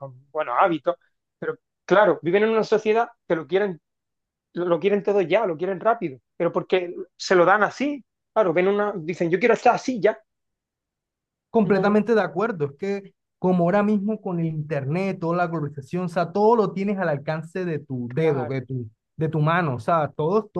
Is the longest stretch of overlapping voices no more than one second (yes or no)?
yes